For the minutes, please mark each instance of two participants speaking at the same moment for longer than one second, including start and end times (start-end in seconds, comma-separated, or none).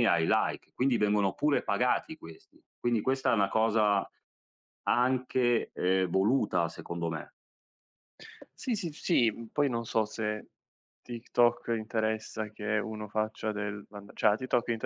none